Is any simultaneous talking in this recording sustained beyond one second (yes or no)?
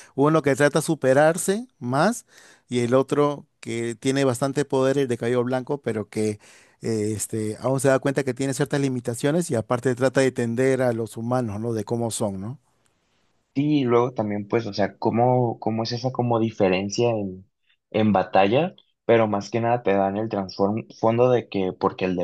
no